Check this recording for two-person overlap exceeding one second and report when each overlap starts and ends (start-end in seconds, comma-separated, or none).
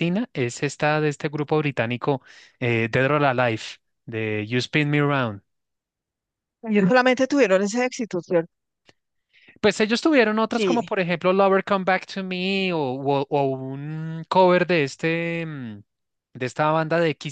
none